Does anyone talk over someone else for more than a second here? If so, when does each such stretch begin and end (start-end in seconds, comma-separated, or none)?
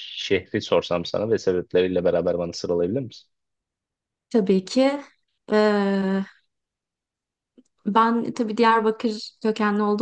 none